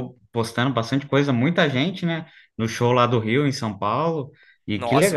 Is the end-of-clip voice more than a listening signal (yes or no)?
yes